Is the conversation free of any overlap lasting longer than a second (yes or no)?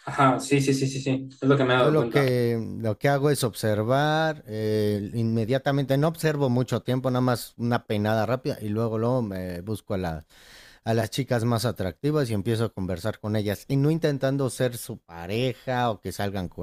yes